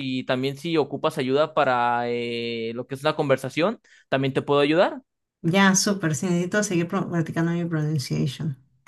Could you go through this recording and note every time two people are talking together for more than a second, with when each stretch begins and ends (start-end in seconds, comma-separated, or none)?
none